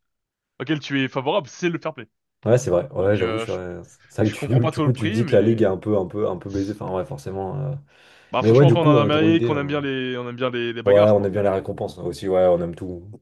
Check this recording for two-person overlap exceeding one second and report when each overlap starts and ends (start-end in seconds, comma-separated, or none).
4.2-5.7, 8.4-9.6